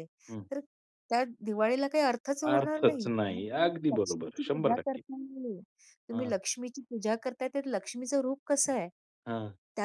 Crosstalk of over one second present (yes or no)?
yes